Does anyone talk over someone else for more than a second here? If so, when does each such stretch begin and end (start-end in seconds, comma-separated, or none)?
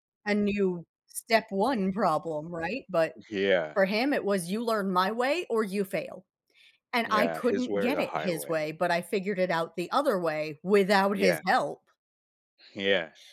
7.0-8.7